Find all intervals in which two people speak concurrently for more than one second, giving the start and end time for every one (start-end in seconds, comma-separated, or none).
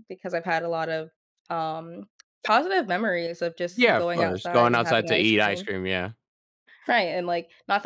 3.7-5.7